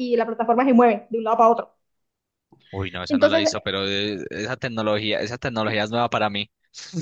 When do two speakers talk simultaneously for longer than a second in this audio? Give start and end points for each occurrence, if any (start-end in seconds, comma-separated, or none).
none